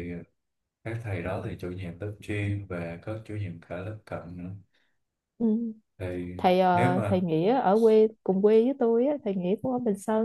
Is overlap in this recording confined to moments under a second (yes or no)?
yes